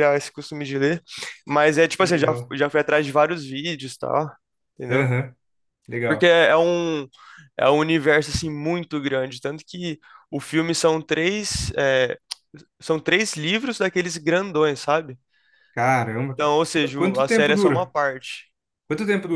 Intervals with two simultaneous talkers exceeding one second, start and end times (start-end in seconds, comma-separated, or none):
16.2-17.9